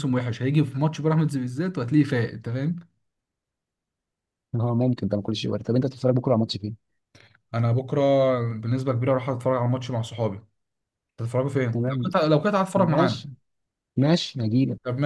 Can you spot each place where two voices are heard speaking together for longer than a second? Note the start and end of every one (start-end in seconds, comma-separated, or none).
none